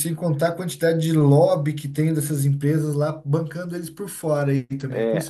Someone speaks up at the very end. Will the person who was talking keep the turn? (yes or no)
no